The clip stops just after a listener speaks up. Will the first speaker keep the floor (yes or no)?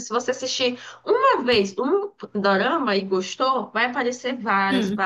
yes